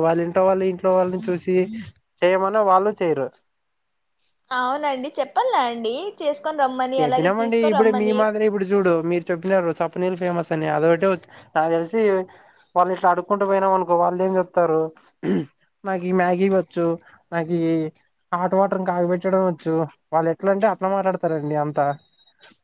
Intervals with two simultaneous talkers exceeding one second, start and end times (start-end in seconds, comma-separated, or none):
none